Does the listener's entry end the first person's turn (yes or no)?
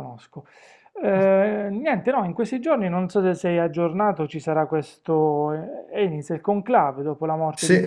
no